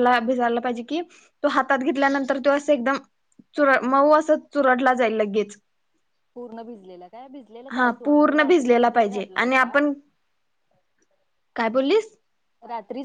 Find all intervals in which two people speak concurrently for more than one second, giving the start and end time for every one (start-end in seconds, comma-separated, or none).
7.7-9.8